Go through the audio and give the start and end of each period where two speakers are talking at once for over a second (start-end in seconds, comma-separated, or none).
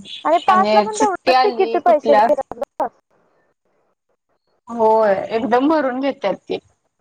0.9-2.3